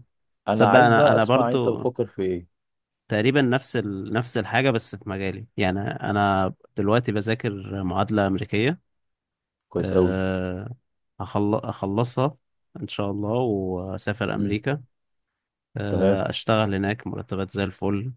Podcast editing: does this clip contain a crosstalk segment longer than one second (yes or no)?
yes